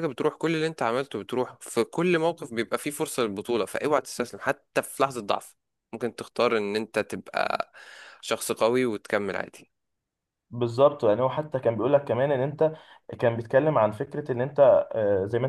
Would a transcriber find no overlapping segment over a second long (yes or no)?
yes